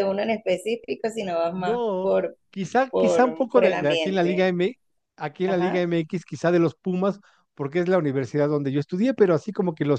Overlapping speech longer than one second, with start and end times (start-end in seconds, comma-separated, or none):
2.9-4.5